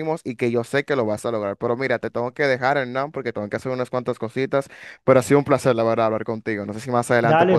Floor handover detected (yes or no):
yes